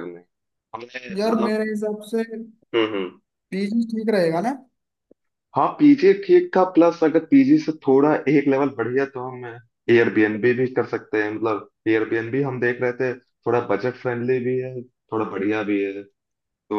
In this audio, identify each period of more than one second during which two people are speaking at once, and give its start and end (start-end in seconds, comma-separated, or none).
none